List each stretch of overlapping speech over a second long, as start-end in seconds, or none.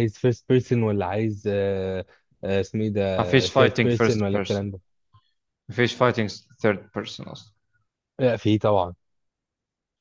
3.2-4.7